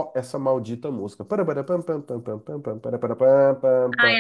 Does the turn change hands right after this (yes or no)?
yes